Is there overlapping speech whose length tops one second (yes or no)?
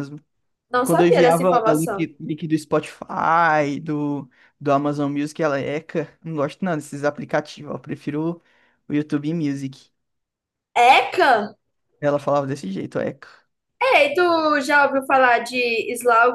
yes